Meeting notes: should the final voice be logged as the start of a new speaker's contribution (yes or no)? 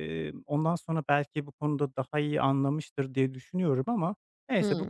no